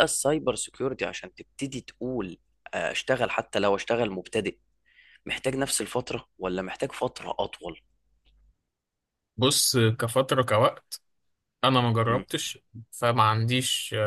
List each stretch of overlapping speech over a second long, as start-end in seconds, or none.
none